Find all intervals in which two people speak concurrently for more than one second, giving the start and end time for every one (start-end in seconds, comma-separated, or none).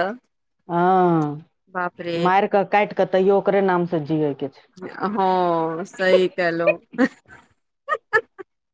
none